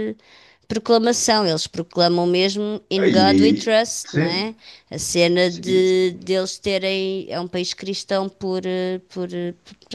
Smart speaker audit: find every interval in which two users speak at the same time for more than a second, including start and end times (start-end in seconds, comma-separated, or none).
3.0-4.5